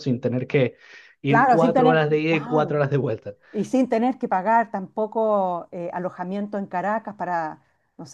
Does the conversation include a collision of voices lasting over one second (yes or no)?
yes